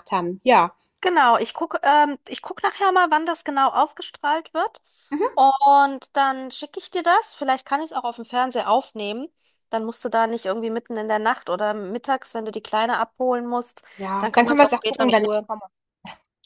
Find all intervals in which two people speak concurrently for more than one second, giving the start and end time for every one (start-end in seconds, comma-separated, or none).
14.2-15.5